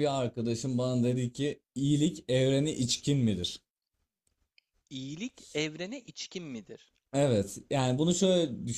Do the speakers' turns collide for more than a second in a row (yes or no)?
no